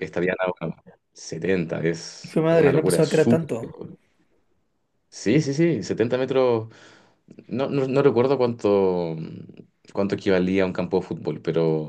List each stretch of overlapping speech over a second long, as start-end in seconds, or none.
2.2-3.7